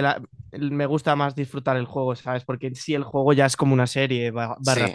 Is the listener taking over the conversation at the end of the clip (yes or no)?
yes